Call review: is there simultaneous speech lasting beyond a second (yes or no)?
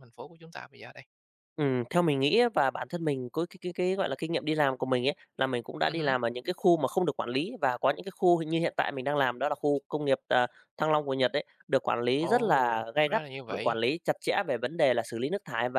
yes